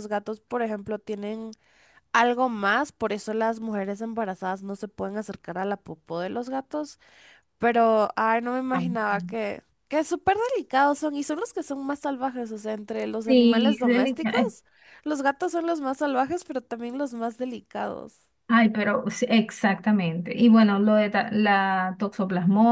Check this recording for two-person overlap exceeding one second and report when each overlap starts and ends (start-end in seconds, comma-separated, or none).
13.2-14.5